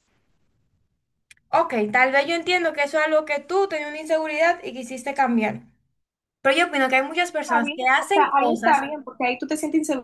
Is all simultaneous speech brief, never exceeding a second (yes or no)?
no